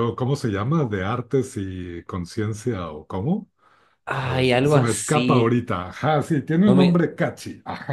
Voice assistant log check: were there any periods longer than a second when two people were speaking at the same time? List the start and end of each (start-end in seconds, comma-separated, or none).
4.2-5.6